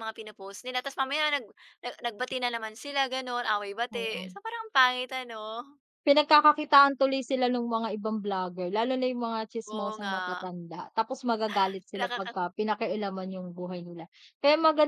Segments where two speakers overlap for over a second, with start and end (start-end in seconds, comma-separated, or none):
none